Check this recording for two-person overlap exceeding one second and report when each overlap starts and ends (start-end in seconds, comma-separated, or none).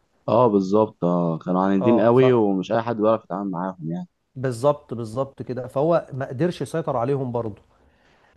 none